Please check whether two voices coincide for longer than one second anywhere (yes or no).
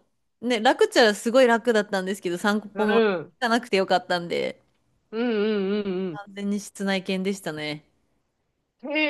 no